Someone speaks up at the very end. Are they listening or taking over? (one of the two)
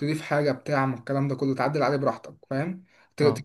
listening